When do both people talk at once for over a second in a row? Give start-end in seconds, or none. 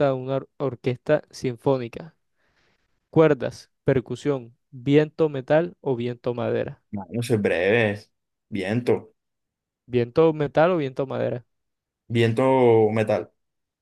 none